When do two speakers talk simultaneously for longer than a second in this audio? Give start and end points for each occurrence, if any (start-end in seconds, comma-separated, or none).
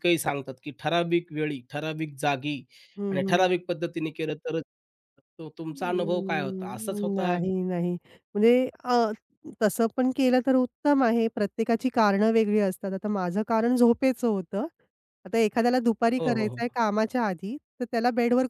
5.7-7.3